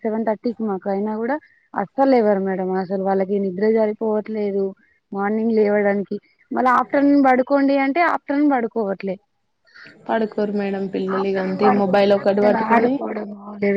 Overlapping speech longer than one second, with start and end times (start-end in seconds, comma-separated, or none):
11.2-12.9